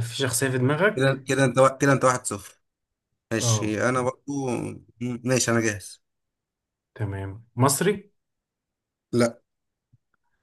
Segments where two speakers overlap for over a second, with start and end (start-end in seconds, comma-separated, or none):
none